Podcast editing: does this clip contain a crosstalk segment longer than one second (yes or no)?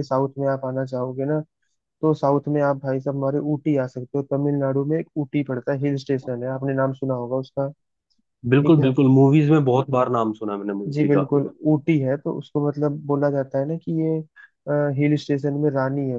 no